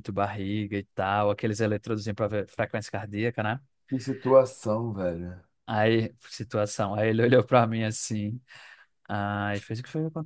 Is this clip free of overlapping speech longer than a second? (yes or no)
yes